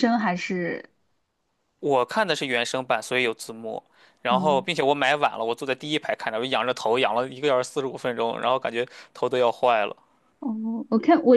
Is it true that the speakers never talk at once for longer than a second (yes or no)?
yes